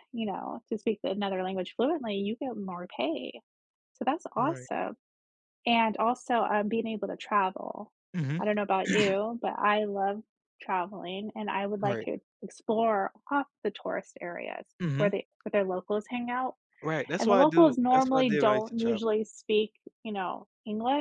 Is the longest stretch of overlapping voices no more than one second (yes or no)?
no